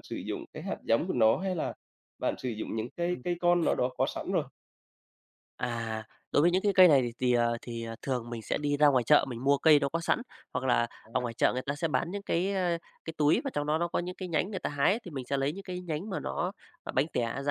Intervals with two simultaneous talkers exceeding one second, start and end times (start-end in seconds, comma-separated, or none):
none